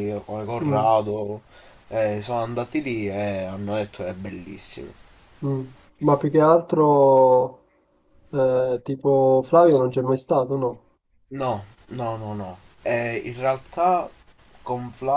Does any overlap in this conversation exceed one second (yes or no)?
no